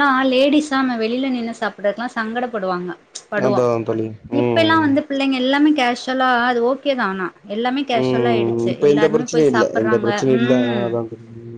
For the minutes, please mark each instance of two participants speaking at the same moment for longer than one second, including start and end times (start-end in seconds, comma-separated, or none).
8.0-10.8